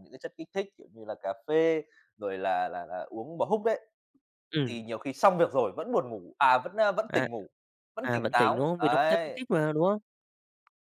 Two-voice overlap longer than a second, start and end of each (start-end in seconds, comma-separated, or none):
8.0-9.4